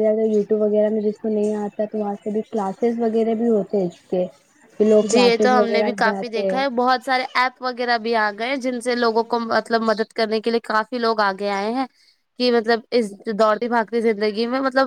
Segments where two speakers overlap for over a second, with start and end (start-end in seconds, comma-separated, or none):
5.1-6.6